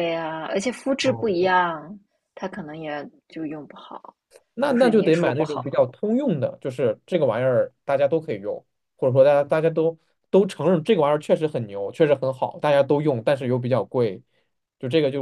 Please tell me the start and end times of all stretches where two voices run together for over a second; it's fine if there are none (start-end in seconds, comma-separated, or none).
4.6-5.8